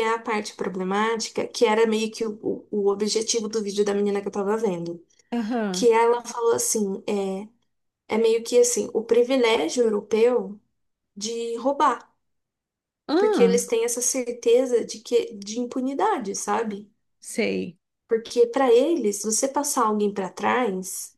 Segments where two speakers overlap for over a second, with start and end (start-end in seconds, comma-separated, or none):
none